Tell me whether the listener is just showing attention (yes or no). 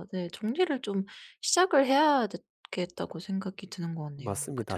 no